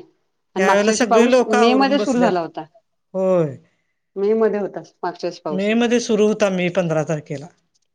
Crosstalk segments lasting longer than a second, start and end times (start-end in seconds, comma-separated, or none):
0.6-2.3